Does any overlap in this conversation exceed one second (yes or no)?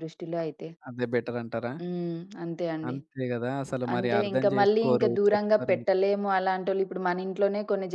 yes